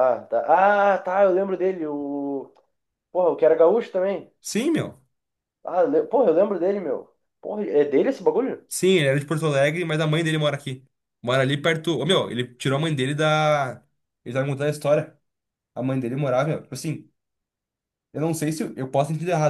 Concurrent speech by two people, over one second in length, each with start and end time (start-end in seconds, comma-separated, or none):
none